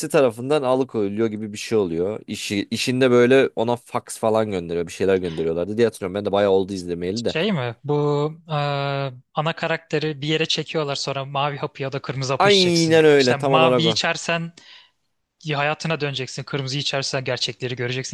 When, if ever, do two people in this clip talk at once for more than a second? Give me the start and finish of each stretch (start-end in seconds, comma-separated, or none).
12.4-14.0